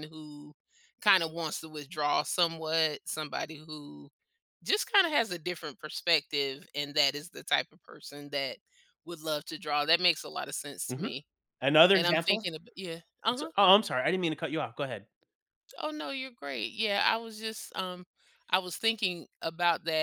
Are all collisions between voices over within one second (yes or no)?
yes